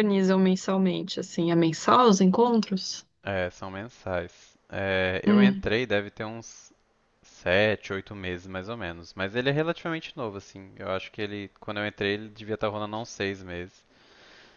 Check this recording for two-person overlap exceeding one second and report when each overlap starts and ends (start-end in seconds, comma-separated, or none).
none